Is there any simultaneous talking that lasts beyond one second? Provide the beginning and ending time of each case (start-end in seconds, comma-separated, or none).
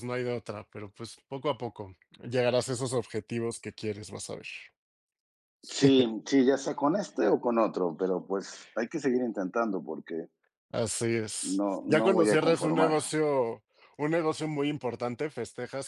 11.6-12.9